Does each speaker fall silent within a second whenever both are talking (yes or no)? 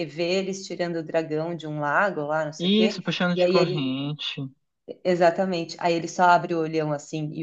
no